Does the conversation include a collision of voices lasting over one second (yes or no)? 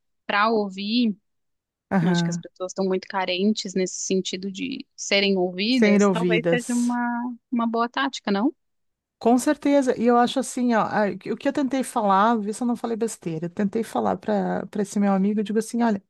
yes